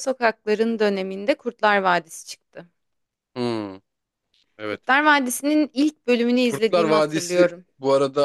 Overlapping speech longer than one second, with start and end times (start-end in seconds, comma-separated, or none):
6.4-7.6